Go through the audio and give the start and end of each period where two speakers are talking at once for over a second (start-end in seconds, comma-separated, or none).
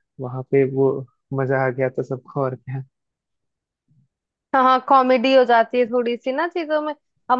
none